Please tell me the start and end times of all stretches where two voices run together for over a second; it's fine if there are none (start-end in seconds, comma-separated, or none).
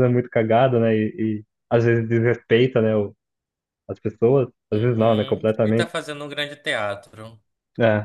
4.7-5.9